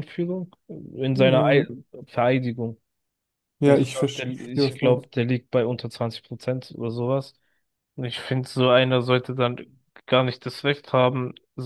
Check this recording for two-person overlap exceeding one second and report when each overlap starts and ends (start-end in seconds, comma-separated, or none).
3.6-5.1